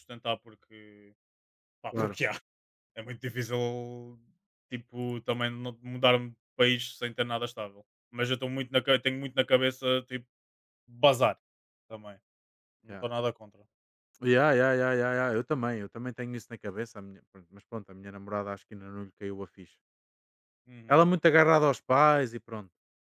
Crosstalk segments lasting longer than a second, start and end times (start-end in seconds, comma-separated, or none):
none